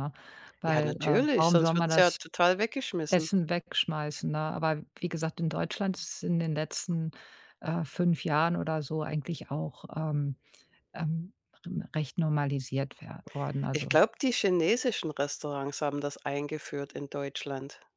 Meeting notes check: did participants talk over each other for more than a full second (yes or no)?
yes